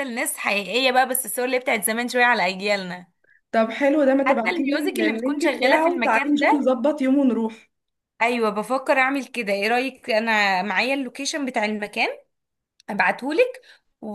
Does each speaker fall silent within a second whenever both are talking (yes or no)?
no